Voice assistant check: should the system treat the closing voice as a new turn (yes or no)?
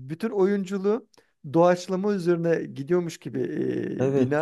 no